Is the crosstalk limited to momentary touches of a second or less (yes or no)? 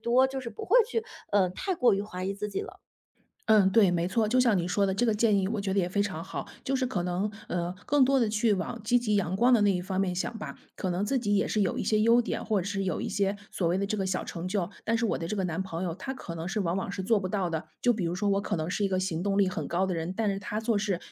yes